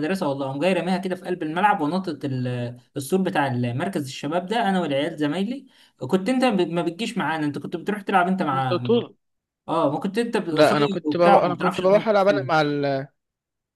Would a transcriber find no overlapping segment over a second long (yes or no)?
no